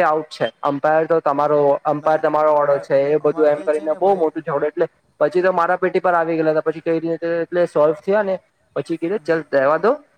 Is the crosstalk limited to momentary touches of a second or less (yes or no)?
no